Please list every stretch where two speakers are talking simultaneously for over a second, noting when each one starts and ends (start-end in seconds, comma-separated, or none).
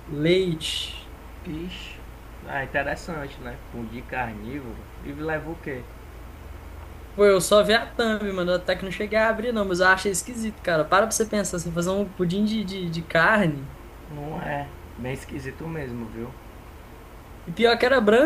none